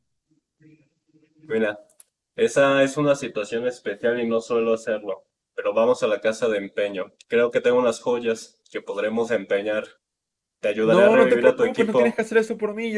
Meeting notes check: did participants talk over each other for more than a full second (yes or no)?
yes